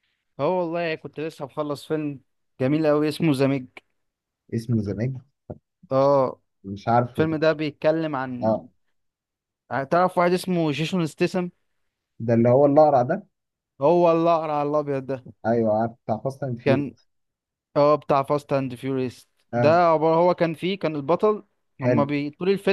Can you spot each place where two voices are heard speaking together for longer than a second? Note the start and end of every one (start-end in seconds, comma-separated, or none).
none